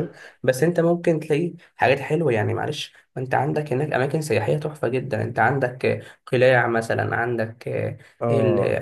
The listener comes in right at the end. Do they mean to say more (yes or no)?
no